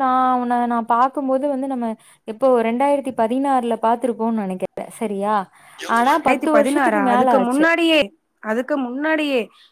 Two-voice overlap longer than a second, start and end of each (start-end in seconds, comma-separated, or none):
6.0-7.7